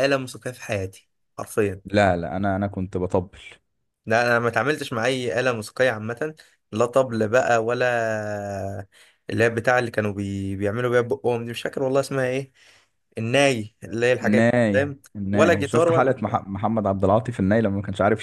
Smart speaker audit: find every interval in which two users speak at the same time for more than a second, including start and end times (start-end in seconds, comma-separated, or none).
14.2-16.4